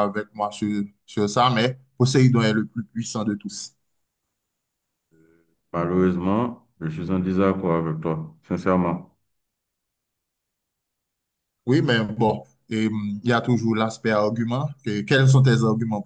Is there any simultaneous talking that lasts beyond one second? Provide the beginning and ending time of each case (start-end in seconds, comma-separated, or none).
none